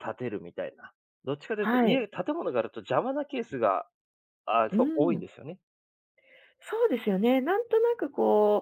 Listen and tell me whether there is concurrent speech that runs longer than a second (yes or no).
no